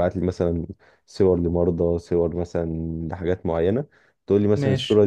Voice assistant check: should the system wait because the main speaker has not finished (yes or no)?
yes